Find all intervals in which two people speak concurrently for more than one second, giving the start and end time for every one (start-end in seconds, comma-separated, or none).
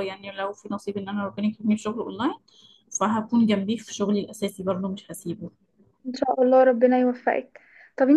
none